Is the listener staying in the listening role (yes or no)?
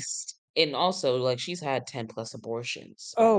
no